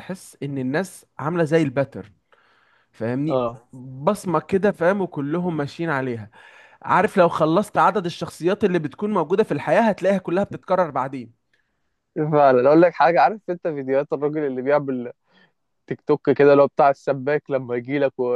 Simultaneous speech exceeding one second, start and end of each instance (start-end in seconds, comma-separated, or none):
none